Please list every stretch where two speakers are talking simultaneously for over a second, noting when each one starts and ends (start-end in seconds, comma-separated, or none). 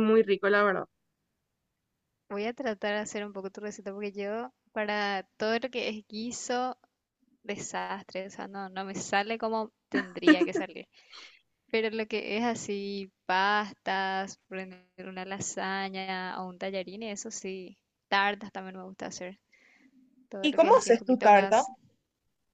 20.4-21.6